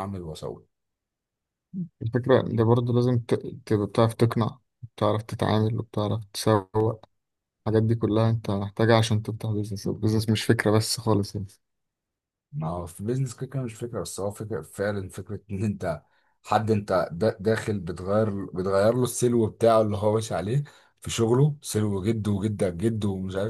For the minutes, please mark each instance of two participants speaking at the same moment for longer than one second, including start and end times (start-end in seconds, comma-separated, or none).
none